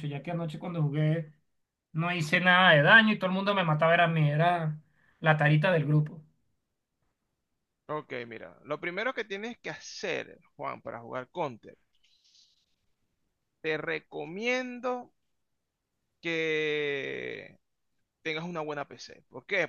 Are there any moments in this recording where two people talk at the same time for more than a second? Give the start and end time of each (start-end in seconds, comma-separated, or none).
none